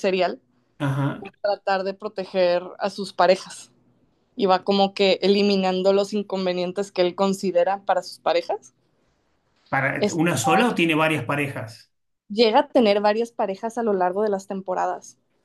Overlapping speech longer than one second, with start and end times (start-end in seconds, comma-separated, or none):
none